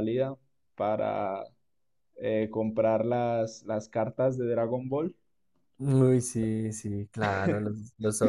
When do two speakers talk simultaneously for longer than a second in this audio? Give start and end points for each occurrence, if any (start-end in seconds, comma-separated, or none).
none